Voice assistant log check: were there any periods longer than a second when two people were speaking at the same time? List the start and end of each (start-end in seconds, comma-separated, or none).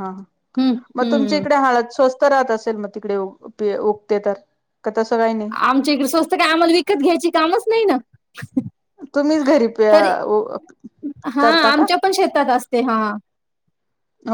none